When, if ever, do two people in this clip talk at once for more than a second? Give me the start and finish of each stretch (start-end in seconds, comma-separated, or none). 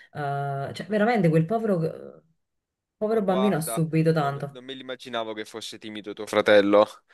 3.1-4.6